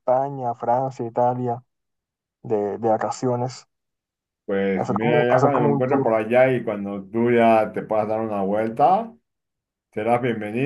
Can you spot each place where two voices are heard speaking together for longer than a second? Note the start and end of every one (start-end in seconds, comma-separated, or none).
4.7-6.2